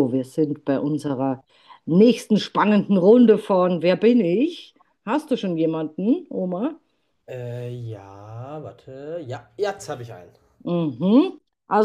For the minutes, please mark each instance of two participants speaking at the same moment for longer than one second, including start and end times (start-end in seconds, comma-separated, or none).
none